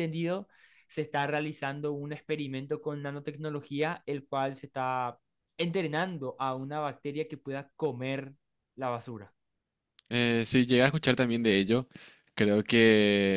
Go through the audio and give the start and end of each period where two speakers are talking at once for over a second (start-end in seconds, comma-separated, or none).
none